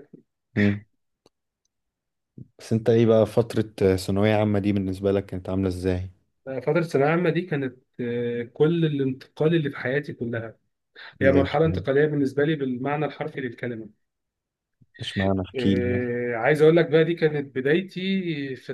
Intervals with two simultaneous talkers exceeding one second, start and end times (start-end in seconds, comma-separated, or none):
none